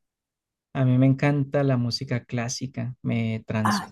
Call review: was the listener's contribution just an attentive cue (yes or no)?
yes